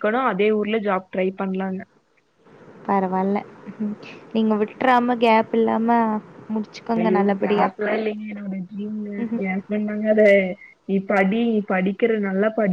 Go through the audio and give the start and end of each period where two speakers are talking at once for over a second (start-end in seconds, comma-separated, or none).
none